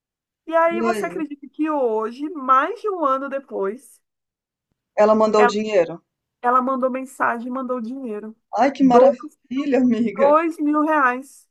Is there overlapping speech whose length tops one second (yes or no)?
no